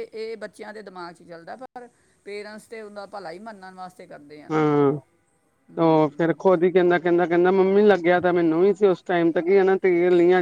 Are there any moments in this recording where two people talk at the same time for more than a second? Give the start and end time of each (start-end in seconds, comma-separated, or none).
none